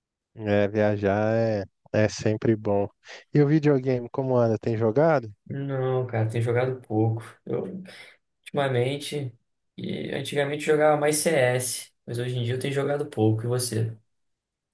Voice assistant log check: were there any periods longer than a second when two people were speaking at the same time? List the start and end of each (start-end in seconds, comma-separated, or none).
none